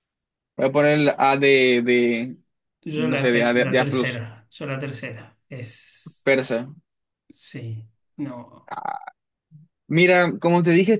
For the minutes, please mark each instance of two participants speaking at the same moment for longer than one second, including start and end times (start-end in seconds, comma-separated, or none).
3.0-4.2